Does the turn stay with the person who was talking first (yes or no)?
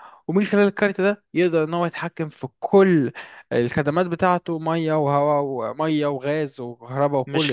no